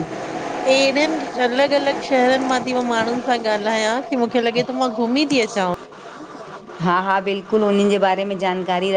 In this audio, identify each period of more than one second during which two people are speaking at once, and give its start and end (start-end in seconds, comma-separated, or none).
none